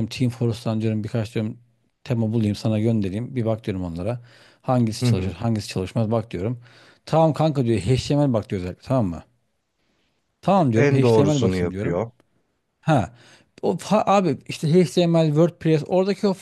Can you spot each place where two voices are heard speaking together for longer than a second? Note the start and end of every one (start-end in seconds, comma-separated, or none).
10.7-12.0